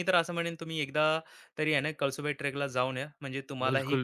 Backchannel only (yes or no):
no